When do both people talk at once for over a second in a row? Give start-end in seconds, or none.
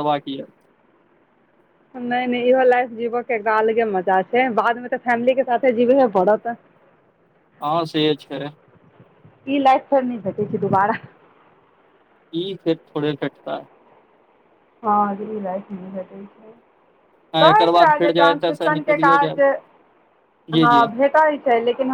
17.4-19.4